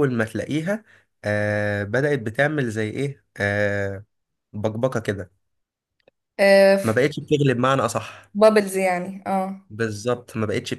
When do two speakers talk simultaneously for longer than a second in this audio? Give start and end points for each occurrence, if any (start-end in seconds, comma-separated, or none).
none